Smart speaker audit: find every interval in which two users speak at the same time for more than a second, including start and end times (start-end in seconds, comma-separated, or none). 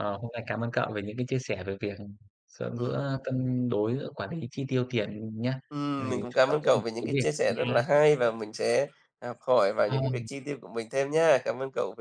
6.0-7.8